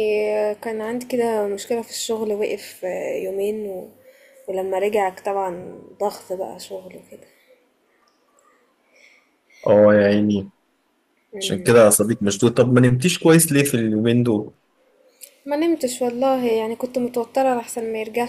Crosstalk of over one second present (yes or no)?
no